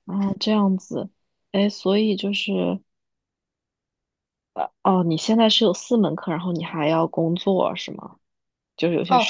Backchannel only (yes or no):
no